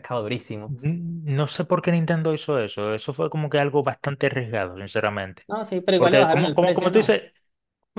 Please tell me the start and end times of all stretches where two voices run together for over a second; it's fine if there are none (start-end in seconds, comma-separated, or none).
6.0-7.2